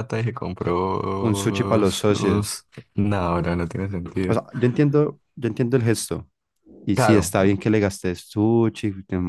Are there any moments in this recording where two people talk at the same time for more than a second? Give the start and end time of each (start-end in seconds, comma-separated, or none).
1.2-2.6